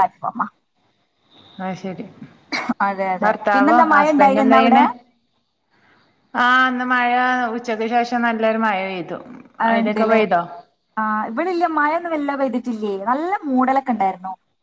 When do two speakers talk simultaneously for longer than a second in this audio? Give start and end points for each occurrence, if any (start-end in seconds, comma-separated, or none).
3.2-4.8